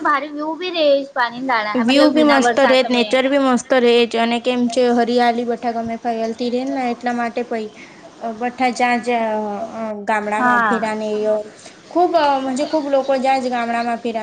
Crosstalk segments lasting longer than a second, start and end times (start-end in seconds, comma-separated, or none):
1.7-3.1